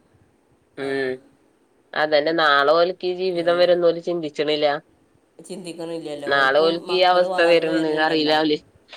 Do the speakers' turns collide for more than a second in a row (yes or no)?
yes